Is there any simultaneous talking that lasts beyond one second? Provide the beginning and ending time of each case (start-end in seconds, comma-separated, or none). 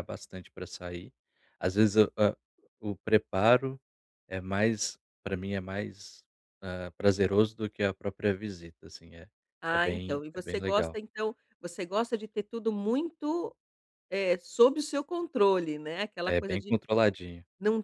9.7-11.0